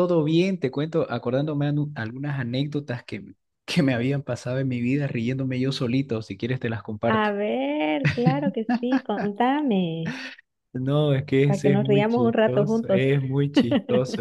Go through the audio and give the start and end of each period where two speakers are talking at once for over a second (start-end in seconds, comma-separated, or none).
11.4-13.0